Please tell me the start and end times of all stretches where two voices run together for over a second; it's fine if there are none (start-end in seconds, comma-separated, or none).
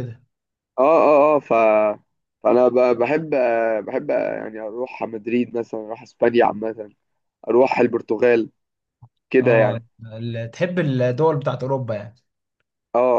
none